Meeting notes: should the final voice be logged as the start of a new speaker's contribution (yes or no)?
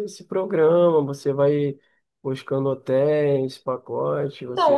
yes